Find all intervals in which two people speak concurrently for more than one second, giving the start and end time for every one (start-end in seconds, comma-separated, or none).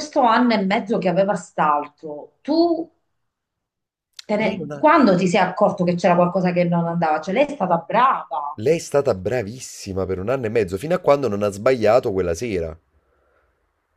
none